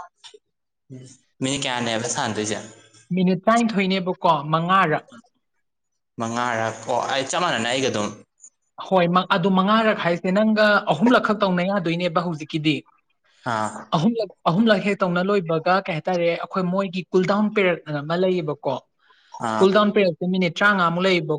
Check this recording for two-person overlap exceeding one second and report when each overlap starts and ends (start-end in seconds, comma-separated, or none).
none